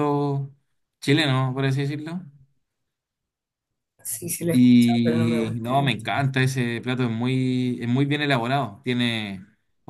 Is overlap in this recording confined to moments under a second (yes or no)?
no